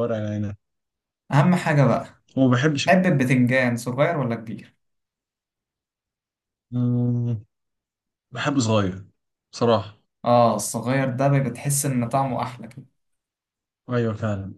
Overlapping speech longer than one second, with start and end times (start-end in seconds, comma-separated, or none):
none